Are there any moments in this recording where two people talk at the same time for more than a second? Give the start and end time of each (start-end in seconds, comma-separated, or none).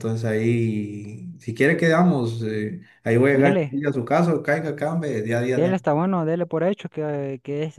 none